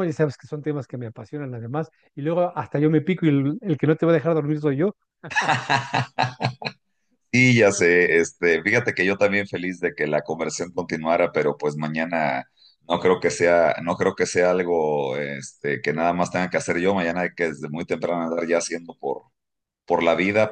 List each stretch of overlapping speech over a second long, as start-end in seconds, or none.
none